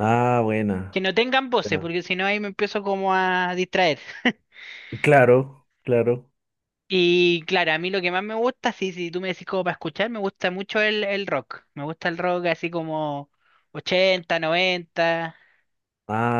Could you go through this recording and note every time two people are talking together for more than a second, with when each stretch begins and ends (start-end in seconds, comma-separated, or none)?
none